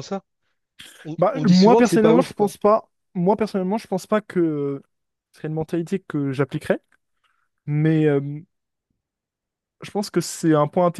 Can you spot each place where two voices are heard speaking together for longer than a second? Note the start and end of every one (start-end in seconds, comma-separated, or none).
1.2-2.5